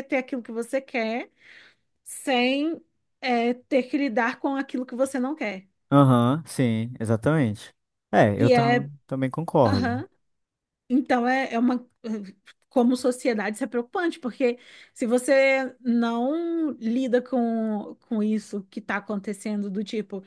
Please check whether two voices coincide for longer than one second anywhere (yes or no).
no